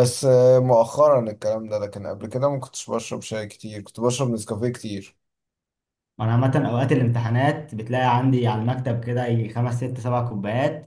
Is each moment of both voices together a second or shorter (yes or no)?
yes